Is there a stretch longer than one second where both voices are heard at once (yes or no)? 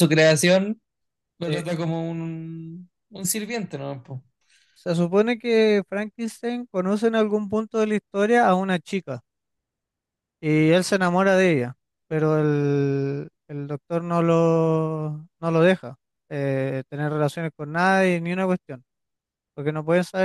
no